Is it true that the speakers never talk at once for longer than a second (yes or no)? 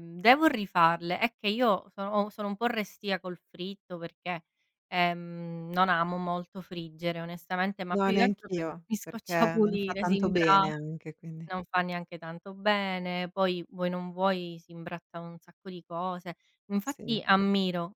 no